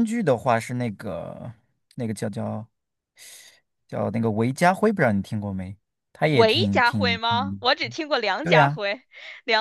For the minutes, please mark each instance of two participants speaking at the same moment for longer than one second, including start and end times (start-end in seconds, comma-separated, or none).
6.3-7.6